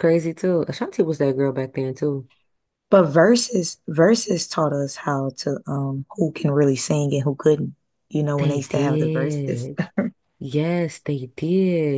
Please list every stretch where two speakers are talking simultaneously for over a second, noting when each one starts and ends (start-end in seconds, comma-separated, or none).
8.4-9.7